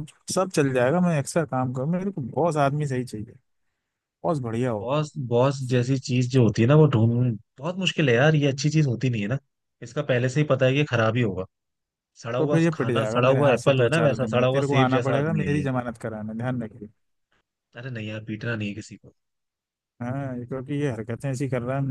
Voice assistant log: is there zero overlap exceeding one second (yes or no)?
no